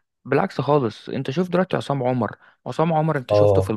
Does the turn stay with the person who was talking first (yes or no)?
no